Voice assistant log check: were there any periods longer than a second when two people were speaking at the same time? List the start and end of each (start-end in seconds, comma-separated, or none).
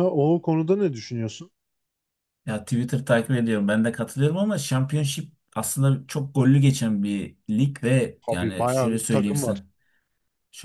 8.3-9.6